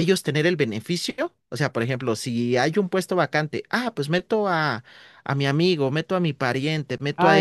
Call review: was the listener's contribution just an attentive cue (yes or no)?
no